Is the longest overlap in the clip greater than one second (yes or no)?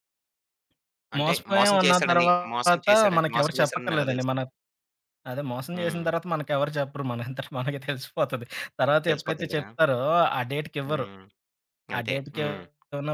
yes